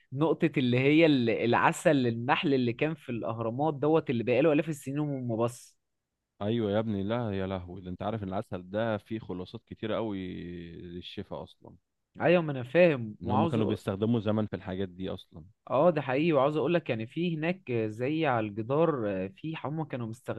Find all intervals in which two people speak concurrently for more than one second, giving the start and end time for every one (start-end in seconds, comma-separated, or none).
none